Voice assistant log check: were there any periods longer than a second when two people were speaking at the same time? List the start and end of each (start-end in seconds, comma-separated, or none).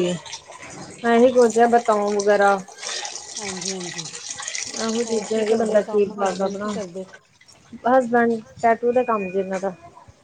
5.0-6.7